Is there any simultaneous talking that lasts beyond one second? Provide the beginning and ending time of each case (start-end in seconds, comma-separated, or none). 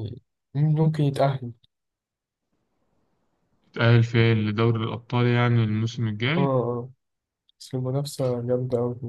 none